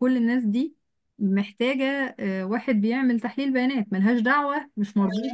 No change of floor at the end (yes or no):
yes